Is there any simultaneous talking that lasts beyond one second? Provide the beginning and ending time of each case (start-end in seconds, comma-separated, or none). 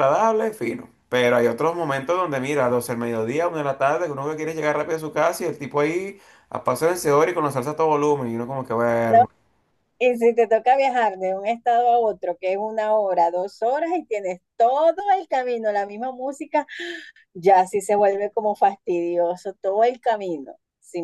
none